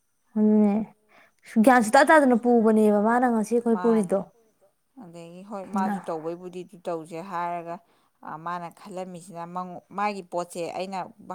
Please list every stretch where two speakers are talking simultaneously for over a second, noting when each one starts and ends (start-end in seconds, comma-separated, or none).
none